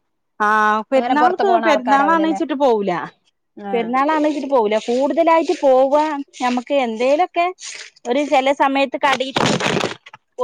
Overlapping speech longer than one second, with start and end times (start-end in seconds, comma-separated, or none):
1.0-2.4